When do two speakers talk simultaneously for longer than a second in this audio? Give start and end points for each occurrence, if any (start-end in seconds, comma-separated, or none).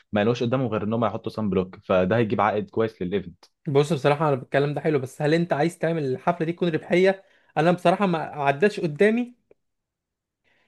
none